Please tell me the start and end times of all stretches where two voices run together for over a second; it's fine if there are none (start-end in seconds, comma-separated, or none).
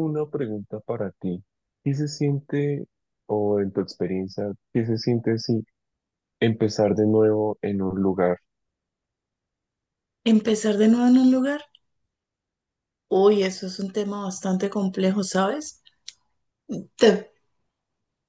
none